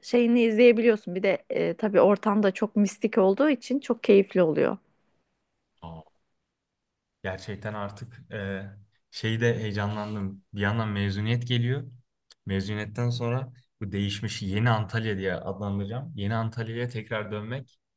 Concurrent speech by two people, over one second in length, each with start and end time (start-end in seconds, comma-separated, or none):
none